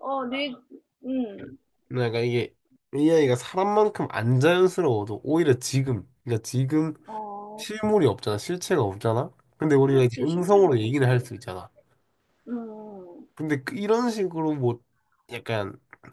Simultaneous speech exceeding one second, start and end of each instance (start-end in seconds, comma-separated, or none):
9.8-11.0